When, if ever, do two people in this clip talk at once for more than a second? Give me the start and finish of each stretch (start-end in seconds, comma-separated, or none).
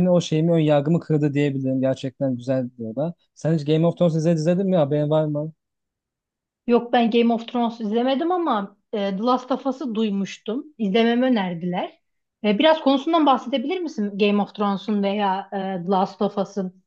none